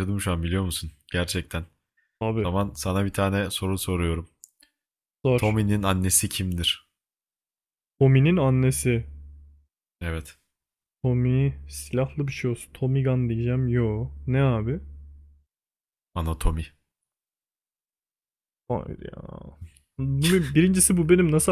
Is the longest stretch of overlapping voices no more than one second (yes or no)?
yes